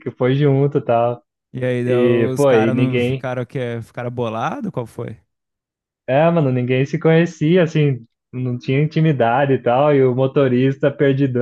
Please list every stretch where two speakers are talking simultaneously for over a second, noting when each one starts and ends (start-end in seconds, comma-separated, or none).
1.9-3.3